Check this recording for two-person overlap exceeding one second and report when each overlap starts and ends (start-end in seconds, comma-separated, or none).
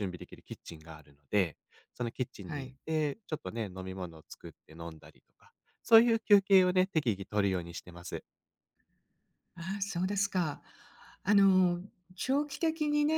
none